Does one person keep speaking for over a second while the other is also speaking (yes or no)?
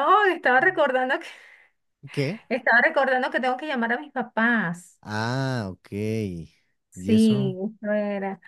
no